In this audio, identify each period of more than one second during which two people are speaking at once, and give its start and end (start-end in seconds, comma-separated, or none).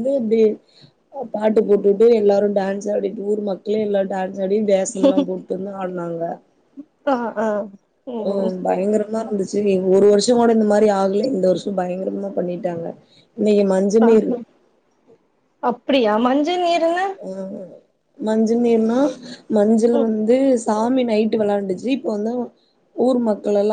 none